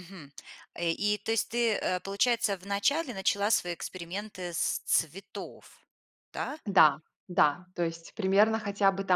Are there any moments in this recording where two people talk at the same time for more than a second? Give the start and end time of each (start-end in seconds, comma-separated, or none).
none